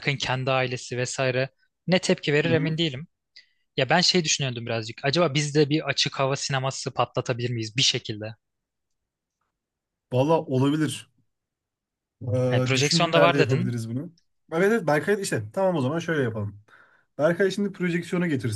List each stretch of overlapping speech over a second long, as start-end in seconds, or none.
12.5-13.7